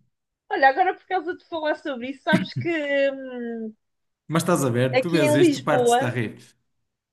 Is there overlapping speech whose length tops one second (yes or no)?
yes